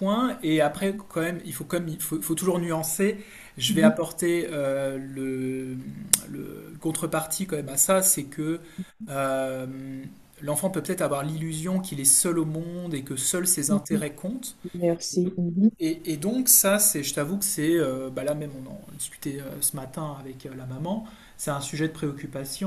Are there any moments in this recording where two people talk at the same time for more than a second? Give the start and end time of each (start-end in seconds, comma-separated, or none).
none